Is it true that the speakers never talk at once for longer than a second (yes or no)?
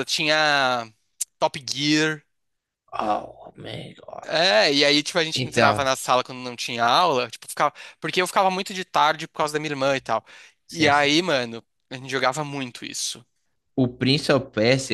yes